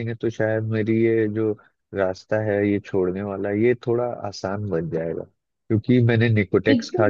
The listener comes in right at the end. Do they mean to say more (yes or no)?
no